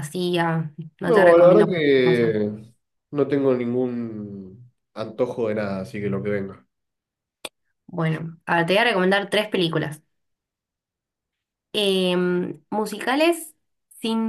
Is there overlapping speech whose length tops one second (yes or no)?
yes